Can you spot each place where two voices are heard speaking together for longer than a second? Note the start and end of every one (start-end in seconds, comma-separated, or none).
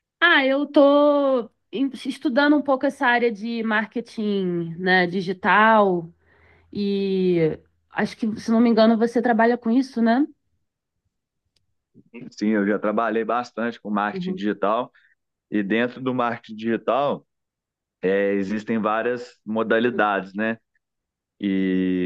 none